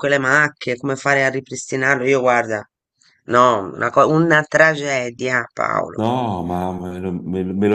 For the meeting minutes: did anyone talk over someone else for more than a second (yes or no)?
no